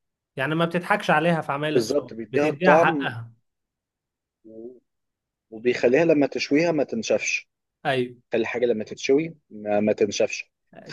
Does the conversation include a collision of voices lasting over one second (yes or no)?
yes